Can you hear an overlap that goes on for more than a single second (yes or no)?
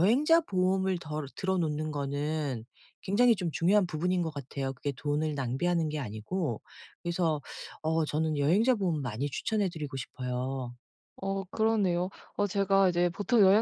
no